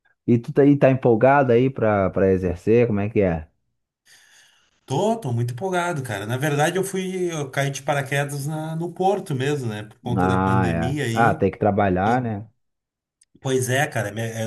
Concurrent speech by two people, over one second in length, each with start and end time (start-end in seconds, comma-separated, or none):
10.2-11.4